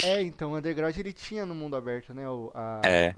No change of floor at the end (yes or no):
yes